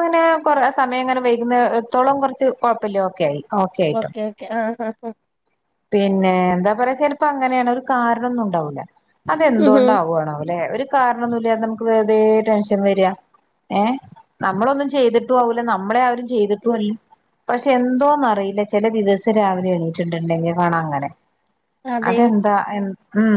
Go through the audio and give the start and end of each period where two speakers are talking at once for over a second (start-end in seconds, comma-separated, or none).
none